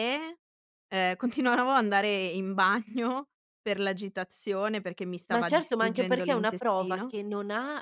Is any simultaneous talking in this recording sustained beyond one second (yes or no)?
yes